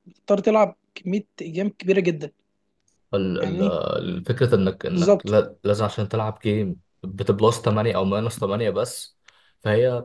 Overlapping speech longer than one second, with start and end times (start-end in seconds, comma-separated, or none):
none